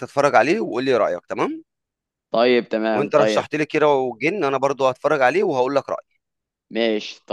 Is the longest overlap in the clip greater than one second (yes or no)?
no